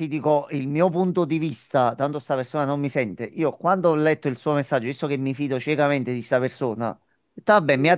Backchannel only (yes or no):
yes